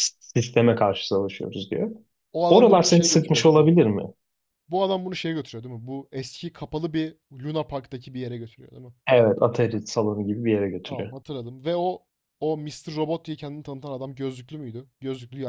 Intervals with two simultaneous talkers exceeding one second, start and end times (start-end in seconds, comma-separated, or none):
2.5-3.7